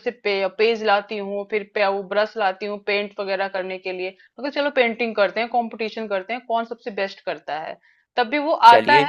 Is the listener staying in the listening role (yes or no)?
yes